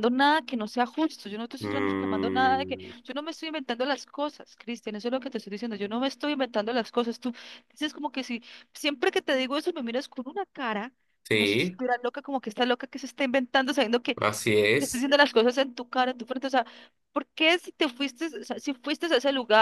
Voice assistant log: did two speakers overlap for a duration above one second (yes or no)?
yes